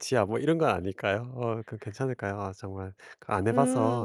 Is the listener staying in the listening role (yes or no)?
no